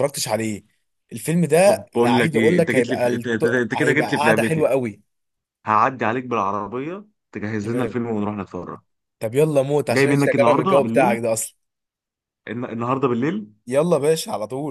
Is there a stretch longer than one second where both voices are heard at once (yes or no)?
yes